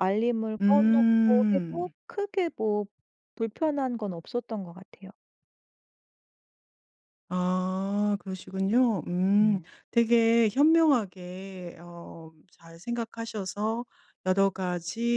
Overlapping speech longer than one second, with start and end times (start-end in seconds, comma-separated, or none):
0.6-1.9